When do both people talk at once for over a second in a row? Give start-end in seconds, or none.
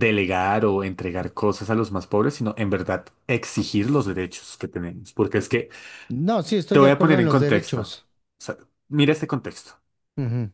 6.7-8.0